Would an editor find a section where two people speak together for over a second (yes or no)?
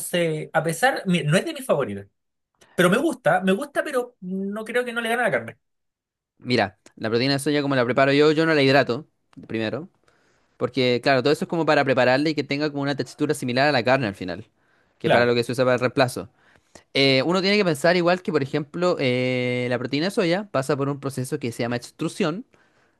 no